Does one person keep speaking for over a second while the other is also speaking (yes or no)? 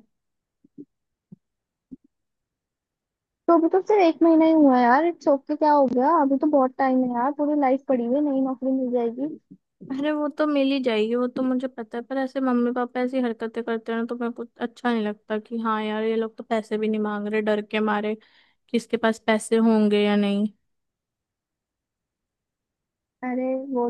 no